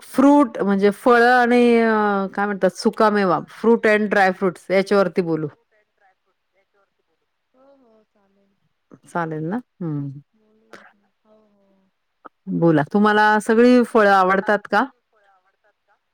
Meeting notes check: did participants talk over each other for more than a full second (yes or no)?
no